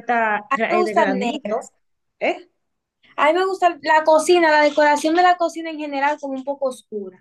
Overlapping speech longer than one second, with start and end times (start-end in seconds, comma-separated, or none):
0.5-1.7